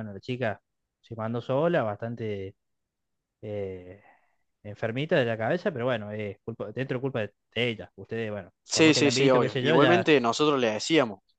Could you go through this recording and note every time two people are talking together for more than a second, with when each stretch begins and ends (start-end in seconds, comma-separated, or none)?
8.6-10.1